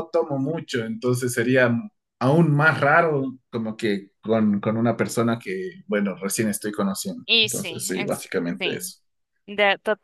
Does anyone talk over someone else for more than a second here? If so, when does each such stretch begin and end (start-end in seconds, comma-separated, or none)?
7.3-8.9